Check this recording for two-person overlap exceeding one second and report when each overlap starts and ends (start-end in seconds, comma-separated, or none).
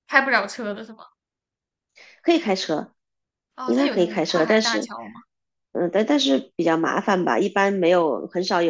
3.6-4.9